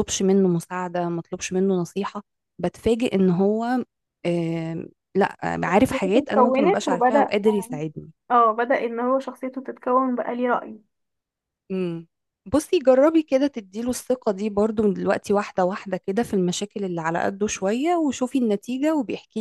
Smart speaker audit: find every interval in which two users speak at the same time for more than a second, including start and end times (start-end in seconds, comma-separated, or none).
5.9-7.3